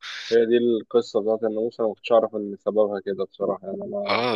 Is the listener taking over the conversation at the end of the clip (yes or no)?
yes